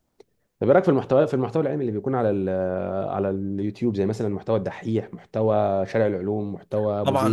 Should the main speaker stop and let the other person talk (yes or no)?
yes